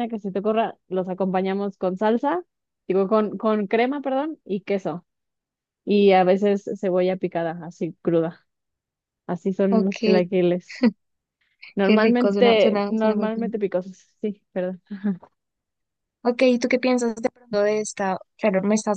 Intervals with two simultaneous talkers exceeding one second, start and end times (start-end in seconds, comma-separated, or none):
11.8-13.5